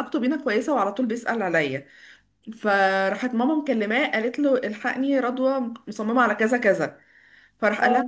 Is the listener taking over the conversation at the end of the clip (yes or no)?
no